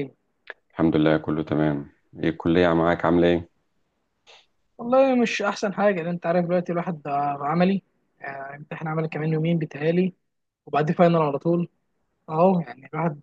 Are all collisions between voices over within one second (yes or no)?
yes